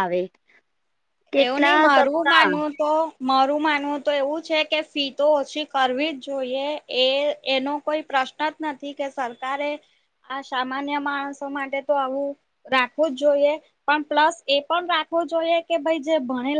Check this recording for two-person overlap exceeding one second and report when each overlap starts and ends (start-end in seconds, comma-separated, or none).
1.4-2.7